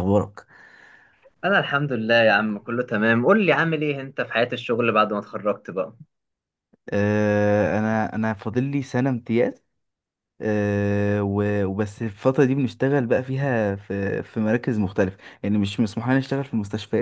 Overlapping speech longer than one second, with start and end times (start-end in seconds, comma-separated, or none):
none